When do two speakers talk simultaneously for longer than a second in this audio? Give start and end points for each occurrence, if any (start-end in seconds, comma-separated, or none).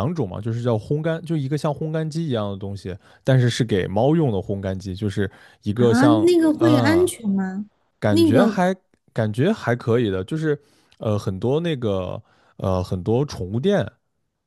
5.7-7.1